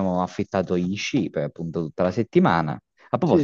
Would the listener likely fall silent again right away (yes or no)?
no